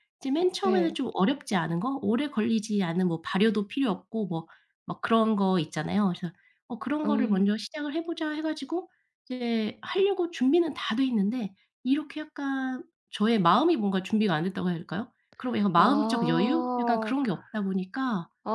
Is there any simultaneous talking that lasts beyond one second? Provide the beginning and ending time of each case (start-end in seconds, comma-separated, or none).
15.8-17.1